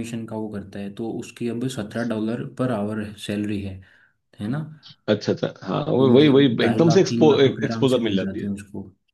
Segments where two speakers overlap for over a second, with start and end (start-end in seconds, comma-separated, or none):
6.0-8.5